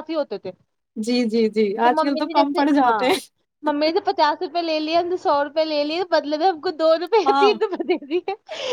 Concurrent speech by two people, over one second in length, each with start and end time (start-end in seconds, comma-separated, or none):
none